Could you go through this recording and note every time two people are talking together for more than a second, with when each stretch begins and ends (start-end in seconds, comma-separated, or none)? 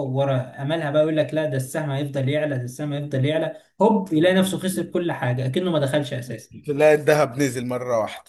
none